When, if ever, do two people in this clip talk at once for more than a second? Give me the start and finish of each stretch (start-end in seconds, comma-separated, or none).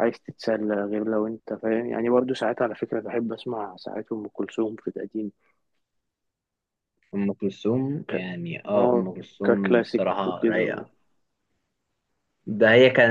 8.8-10.8